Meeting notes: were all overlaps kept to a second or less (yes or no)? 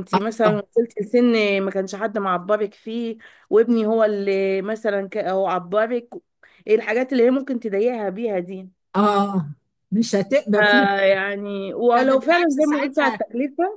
no